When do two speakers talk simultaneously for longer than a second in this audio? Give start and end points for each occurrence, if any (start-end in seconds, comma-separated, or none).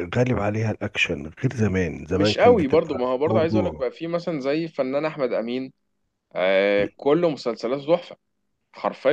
2.1-3.8